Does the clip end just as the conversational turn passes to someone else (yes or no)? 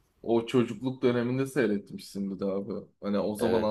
no